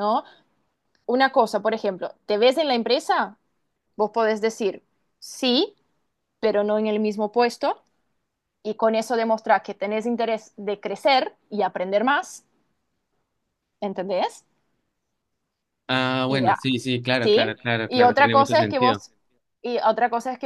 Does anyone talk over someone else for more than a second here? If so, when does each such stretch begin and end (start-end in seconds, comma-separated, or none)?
17.2-19.0